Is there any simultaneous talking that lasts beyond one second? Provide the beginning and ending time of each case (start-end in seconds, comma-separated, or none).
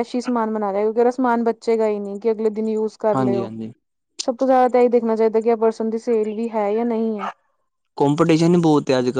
none